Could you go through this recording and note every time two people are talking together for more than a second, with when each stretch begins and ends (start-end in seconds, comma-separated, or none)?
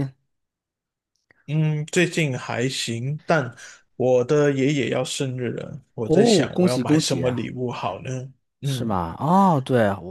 6.0-7.5